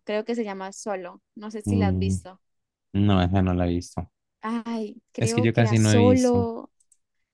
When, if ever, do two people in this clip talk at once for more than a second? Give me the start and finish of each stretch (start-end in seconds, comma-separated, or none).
5.2-6.5